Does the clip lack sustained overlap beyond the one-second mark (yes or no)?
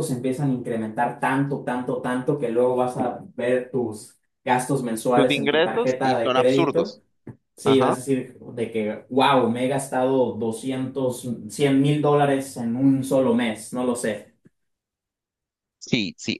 no